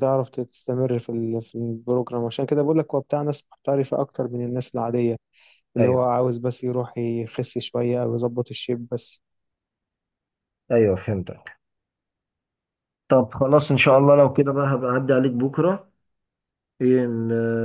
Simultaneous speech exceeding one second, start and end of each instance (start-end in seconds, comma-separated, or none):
none